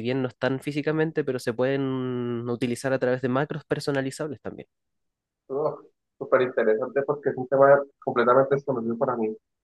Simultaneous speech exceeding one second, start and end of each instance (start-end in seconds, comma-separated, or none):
none